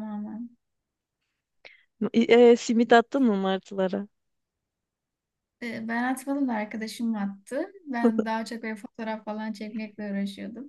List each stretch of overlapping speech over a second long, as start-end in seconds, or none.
none